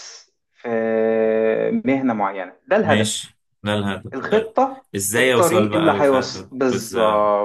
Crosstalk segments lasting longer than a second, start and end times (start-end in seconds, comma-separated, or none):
5.0-6.9